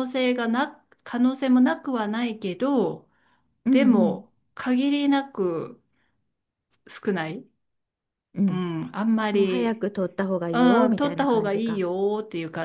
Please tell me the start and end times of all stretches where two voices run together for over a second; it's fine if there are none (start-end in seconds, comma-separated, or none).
10.5-11.8